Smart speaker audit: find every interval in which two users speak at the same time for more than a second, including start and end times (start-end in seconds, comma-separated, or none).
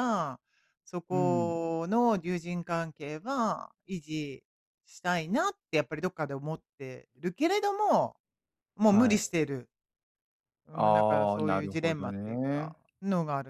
10.7-12.8